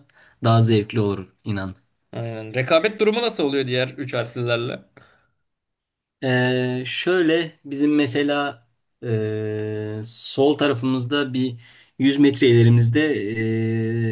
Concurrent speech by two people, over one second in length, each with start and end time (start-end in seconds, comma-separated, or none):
none